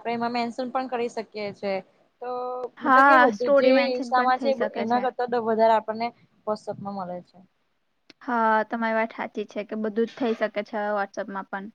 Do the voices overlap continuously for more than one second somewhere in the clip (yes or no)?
yes